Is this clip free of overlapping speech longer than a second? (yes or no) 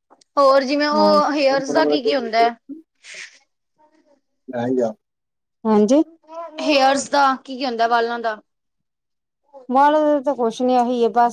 no